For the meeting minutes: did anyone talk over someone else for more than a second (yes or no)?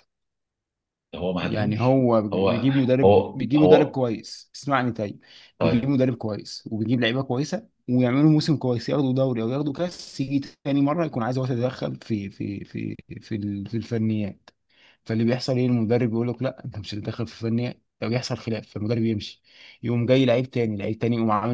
yes